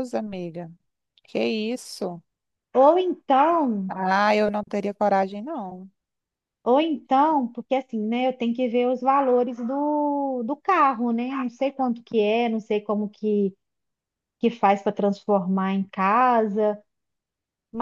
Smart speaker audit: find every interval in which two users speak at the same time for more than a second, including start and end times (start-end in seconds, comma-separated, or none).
none